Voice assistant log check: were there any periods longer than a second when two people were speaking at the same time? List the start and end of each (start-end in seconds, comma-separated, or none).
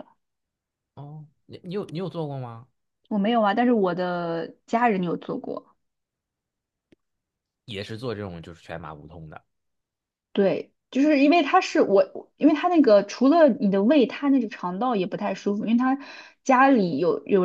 none